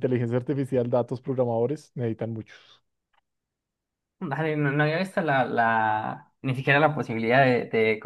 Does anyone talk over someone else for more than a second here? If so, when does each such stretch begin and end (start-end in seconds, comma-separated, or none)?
none